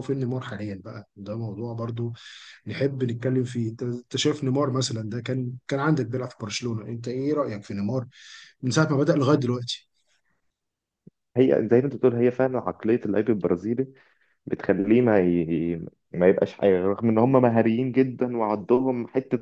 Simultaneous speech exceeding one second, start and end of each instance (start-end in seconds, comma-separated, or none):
none